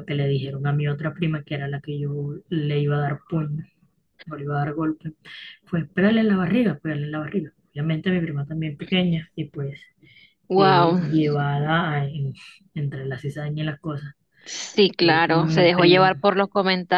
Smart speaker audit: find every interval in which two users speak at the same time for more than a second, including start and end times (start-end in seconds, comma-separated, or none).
15.0-16.3